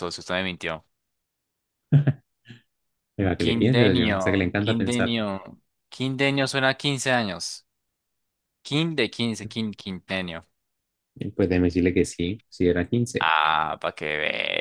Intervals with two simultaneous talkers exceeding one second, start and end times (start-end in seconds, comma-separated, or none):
3.2-5.1